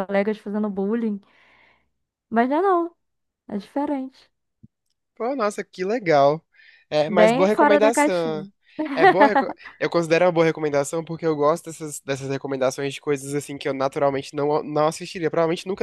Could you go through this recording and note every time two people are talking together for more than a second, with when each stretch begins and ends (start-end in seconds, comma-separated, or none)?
7.1-8.4